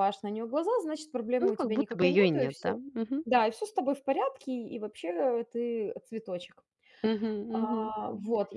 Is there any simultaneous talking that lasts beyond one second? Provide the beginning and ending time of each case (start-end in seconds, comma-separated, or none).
1.4-2.8